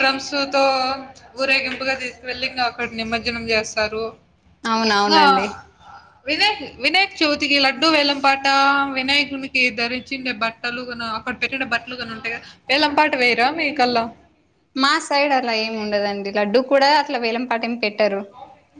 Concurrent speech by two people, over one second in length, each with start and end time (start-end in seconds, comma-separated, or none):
none